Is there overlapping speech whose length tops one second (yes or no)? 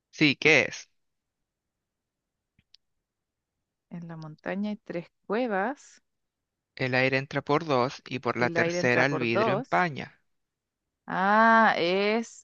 yes